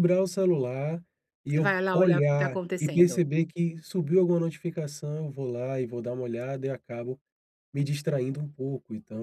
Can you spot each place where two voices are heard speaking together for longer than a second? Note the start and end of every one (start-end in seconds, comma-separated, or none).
1.5-3.2